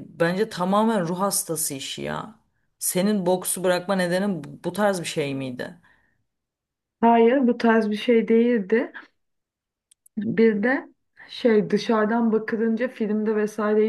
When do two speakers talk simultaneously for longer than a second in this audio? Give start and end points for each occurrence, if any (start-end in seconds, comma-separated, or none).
none